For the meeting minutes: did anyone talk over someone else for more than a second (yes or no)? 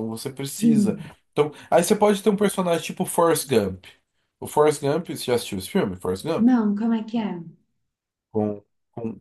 no